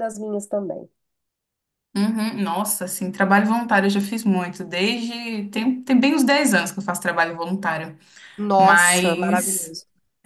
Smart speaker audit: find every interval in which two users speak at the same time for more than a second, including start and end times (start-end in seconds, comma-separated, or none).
8.6-9.8